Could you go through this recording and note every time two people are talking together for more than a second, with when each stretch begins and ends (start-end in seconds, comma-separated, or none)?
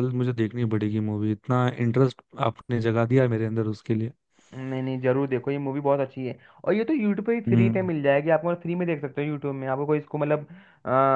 none